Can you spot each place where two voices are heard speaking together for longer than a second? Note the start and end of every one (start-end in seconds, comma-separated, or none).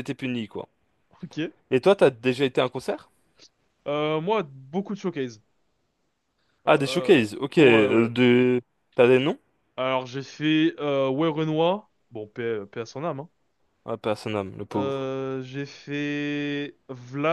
6.7-8.1